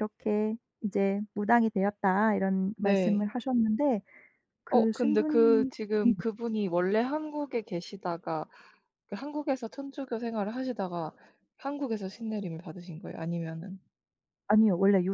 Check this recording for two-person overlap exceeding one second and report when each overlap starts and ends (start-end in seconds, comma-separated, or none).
4.7-6.1